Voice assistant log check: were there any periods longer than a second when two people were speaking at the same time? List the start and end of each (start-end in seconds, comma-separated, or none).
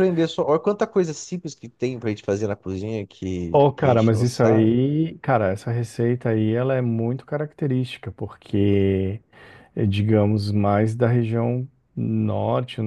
3.5-4.7